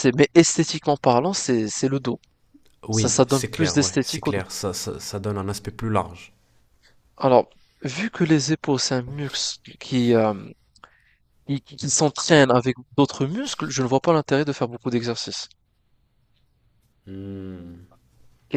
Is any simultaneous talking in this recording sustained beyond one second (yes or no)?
yes